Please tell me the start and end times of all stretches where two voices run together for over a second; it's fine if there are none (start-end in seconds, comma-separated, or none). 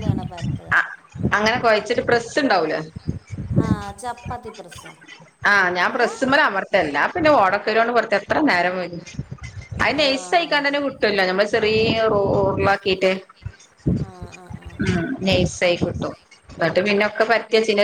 none